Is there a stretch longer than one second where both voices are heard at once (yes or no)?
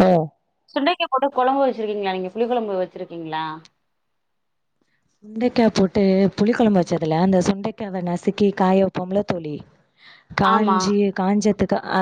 no